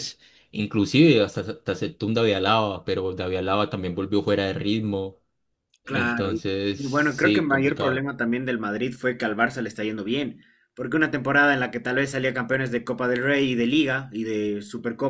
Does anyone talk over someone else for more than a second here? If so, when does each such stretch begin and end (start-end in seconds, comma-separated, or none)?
5.8-8.1